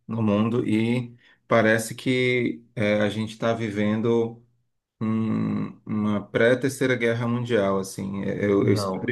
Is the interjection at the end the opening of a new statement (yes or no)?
no